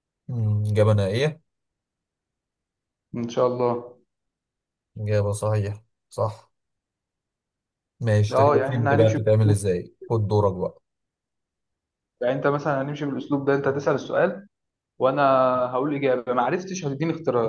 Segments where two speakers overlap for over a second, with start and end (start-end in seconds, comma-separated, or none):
8.3-9.7